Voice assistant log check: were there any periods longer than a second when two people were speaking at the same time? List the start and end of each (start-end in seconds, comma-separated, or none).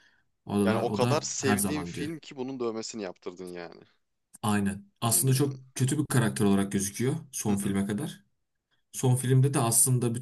0.6-2.1